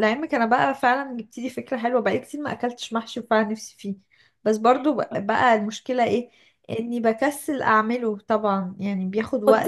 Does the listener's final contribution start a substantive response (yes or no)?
yes